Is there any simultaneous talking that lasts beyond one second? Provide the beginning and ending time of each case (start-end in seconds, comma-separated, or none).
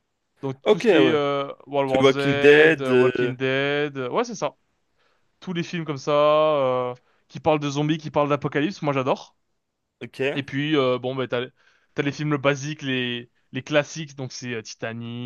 1.9-3.3